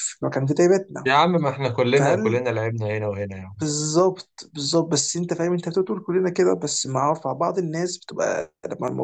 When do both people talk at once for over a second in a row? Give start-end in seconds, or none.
none